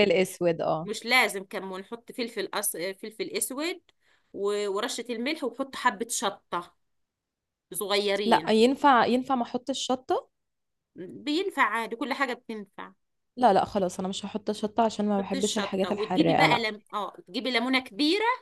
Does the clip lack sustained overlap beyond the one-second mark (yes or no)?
no